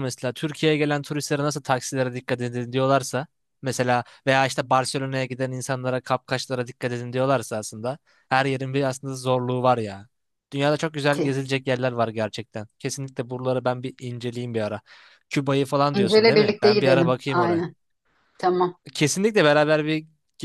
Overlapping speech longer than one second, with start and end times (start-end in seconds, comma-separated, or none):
15.9-17.6